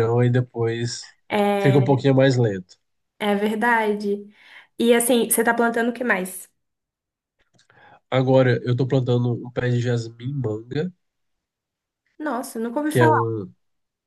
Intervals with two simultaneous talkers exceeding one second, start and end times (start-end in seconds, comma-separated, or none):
none